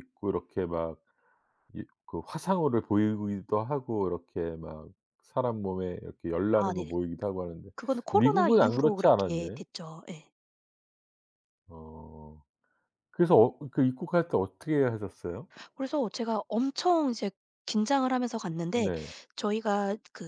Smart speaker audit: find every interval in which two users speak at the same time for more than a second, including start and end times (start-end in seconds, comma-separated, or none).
8.1-9.6